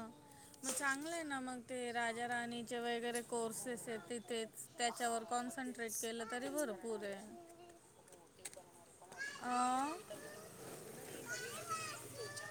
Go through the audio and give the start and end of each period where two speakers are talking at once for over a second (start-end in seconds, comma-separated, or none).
4.9-7.0